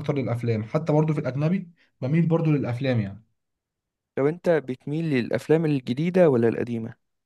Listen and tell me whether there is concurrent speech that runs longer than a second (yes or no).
no